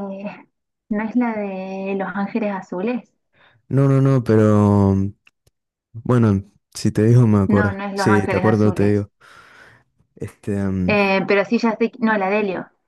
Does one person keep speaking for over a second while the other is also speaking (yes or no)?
yes